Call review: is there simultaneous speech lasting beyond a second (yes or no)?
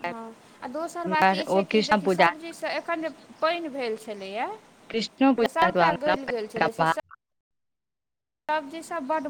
no